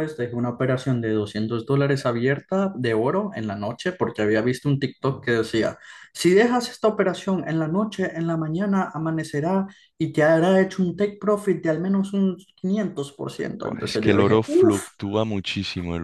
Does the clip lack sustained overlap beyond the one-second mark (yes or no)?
no